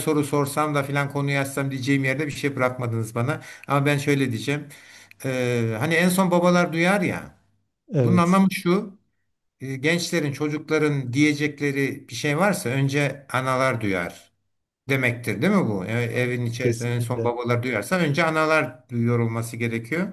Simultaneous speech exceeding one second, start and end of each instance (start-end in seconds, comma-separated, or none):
16.1-17.3